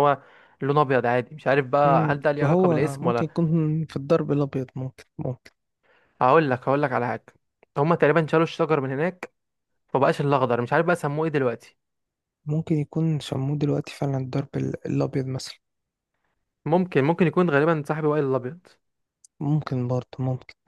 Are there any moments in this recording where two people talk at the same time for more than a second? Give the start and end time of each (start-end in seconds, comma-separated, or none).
1.9-3.3